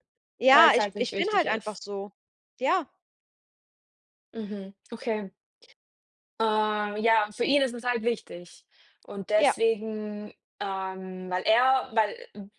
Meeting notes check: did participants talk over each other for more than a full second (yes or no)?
yes